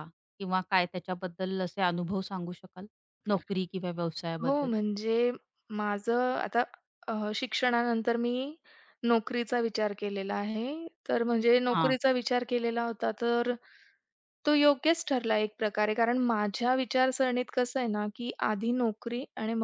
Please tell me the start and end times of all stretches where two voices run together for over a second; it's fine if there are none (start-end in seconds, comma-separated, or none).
none